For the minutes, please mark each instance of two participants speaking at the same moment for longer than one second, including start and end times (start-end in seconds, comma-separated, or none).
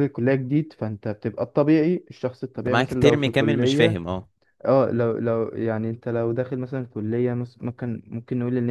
2.6-4.0